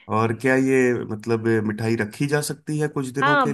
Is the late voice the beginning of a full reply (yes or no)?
yes